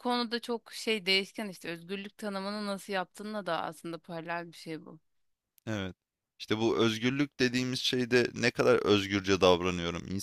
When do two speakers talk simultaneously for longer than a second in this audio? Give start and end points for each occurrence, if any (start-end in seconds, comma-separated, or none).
none